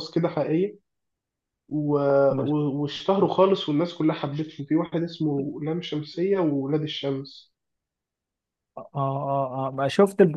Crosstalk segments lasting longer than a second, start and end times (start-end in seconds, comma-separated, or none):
none